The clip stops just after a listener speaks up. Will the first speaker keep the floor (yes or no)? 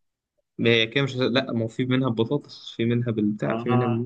no